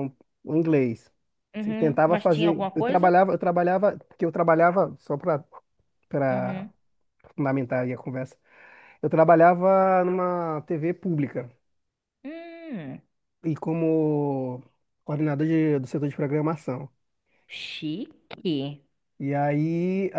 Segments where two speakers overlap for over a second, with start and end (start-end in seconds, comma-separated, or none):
1.6-3.1